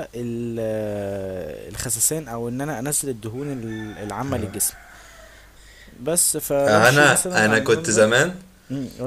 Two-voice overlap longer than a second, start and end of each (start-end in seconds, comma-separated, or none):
6.7-8.0